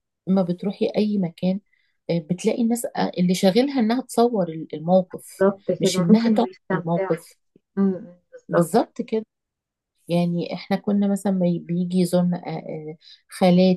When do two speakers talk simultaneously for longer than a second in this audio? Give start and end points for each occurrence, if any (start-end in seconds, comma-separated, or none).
5.4-7.1